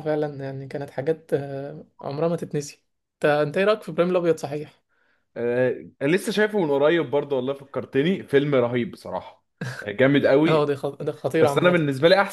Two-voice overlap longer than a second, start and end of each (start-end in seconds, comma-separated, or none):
none